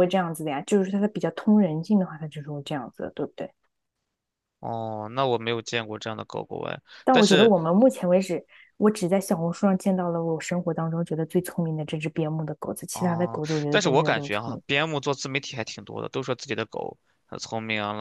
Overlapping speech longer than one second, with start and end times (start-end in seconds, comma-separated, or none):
12.9-14.6